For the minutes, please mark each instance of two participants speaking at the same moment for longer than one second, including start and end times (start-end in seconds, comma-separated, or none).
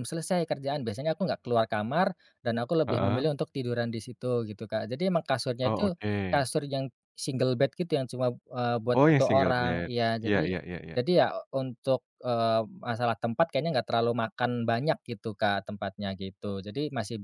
8.9-11.0